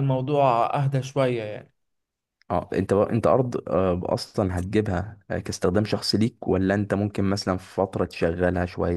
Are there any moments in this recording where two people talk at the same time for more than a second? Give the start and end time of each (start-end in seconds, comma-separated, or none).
none